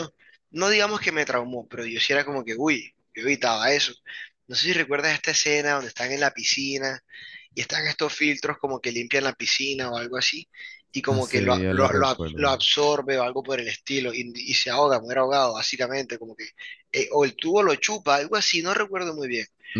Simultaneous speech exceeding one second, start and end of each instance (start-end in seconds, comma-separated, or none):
11.1-12.5